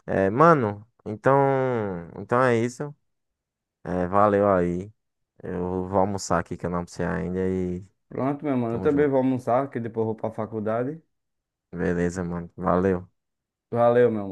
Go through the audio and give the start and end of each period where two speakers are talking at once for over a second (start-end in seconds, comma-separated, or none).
none